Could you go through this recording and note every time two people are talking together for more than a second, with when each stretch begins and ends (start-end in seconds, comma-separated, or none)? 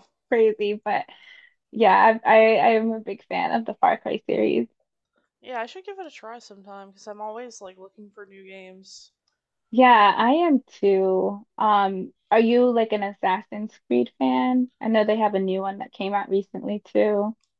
none